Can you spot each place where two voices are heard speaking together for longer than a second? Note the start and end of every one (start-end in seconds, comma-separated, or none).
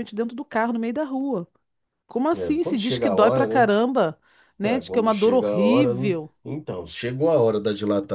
2.3-3.7, 4.6-6.3